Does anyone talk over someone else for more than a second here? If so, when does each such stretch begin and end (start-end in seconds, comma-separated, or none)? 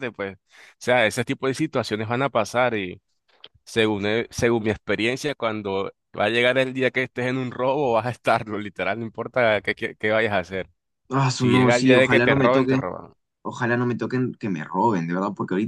11.4-12.8